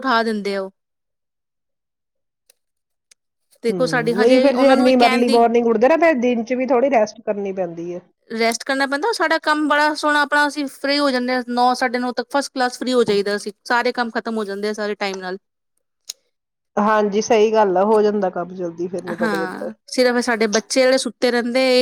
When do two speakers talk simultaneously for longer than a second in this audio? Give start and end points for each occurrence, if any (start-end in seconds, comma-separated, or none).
3.7-5.4